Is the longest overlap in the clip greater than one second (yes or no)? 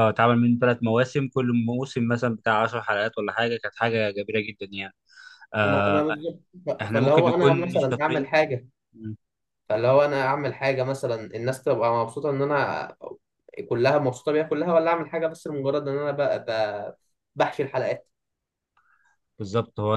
yes